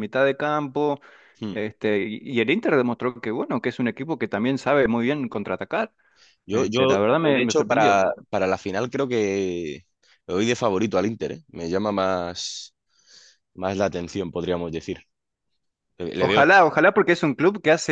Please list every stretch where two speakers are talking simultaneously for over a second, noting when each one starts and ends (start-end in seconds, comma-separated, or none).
6.5-8.0